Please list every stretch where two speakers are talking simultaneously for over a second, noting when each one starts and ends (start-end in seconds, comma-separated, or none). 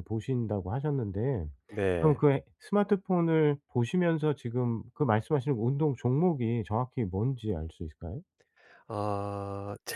none